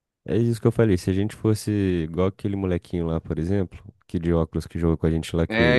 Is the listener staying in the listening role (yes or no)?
yes